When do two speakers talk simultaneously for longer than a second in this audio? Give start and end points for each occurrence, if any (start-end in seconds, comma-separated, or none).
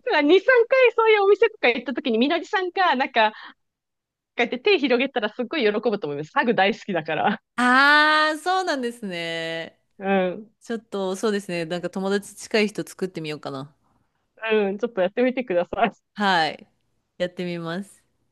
none